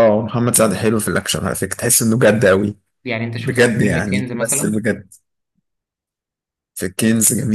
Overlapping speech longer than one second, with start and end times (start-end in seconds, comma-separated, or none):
3.4-4.8